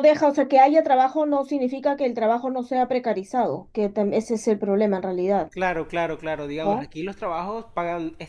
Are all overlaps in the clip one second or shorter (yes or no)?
yes